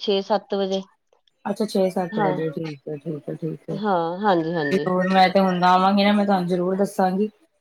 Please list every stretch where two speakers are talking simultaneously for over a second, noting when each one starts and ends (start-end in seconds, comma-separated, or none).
none